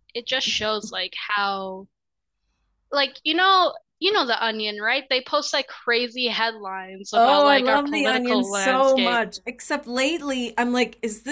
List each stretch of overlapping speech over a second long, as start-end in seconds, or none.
7.1-9.2